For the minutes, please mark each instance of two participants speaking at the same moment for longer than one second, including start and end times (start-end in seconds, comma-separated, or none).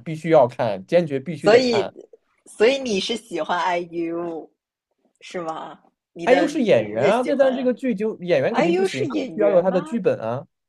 6.2-7.7, 8.5-10.0